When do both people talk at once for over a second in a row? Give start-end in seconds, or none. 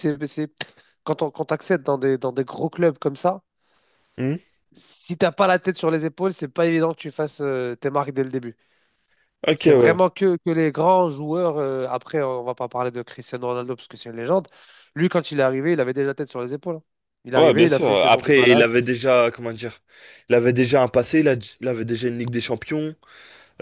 17.3-18.7